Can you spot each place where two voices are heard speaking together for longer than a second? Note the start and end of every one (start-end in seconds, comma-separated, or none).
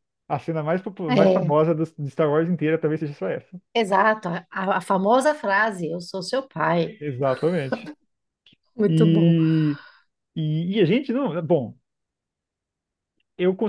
none